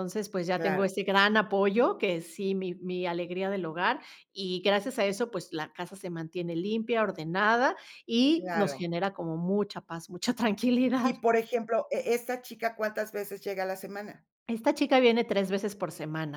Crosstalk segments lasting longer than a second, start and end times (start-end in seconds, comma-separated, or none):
none